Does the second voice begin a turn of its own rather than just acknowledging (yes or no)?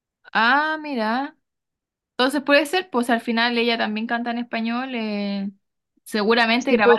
yes